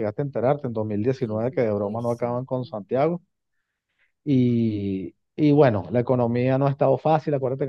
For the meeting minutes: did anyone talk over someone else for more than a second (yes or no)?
yes